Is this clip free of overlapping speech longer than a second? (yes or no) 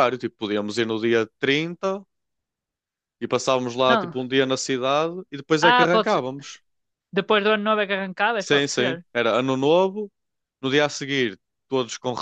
yes